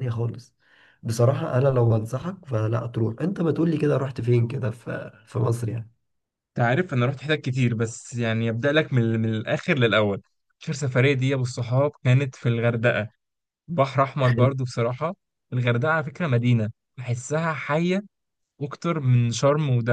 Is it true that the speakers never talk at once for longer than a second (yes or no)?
yes